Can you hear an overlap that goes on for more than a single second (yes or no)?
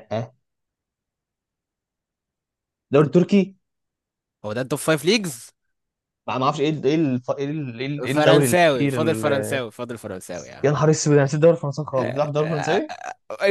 yes